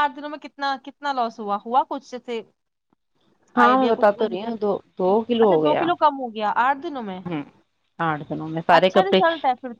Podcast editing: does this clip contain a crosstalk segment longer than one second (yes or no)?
no